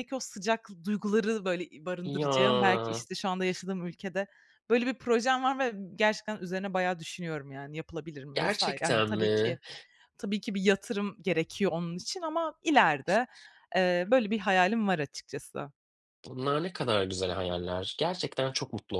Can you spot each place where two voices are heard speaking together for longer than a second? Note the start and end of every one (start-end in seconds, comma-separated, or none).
8.3-9.6